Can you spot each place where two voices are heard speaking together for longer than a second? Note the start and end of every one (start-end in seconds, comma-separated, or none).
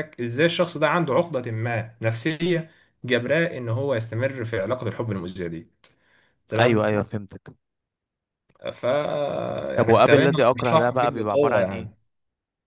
9.8-11.9